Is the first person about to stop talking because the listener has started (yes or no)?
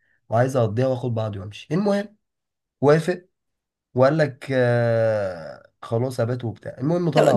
yes